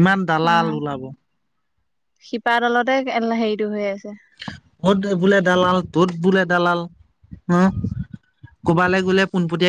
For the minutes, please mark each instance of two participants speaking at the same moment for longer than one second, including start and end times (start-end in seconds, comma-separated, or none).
none